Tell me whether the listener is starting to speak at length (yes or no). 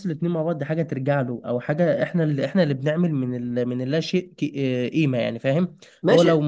no